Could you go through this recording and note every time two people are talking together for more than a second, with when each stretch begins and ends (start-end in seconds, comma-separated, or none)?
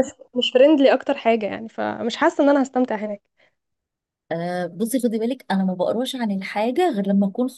none